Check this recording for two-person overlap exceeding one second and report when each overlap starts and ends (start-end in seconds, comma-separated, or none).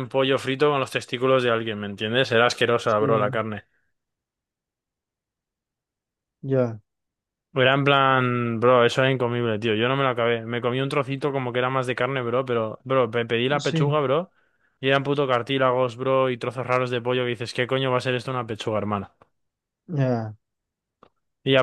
none